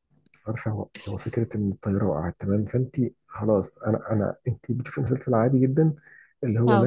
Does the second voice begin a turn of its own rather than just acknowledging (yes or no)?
no